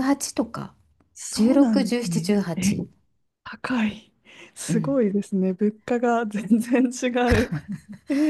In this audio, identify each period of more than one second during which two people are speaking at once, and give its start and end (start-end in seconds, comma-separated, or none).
1.3-2.8